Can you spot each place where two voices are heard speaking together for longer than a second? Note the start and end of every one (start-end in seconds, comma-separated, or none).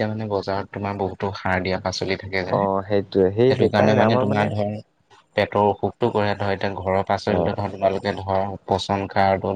2.6-4.2